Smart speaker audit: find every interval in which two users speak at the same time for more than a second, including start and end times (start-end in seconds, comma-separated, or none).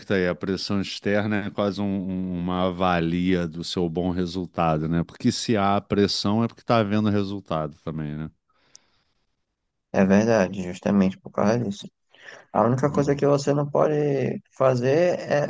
none